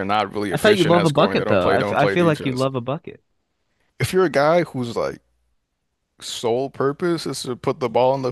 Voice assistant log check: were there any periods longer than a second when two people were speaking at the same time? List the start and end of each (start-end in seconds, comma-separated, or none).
0.5-2.7